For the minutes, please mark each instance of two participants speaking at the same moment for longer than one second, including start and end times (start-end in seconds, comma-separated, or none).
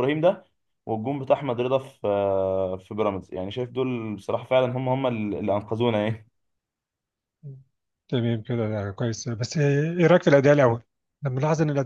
none